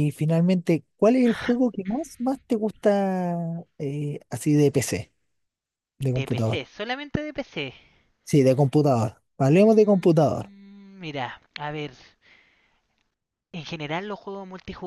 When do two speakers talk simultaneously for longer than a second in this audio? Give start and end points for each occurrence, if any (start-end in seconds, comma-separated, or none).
none